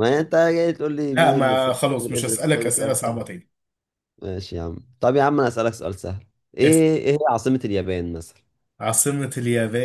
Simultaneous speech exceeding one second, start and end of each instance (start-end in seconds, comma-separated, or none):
1.1-3.0